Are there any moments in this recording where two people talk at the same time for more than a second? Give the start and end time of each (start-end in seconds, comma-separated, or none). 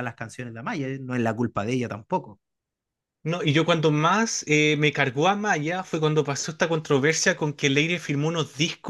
none